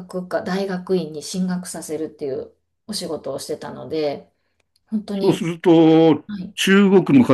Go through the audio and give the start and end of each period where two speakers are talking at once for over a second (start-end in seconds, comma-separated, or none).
none